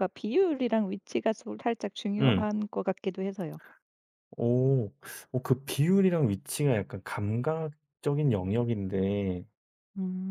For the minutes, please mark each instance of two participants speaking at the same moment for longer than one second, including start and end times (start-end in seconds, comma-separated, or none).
none